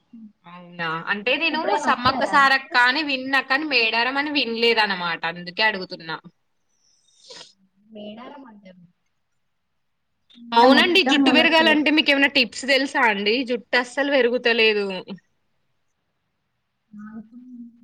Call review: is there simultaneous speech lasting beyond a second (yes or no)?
no